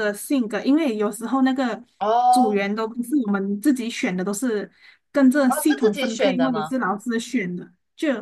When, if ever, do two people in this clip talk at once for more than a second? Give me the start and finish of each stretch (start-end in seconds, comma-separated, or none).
5.5-6.7